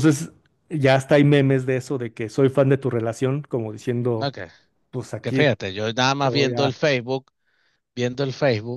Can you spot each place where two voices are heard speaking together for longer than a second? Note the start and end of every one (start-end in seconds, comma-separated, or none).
none